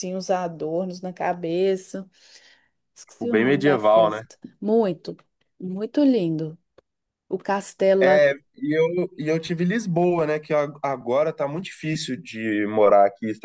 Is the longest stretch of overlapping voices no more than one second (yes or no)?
no